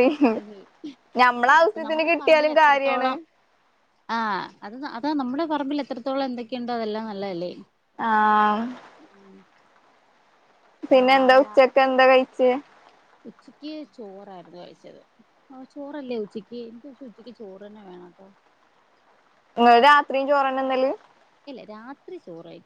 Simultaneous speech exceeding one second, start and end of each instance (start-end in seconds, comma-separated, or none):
1.6-3.1